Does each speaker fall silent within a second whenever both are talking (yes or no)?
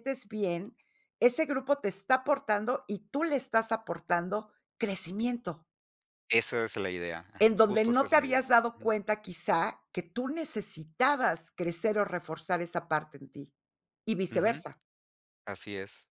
no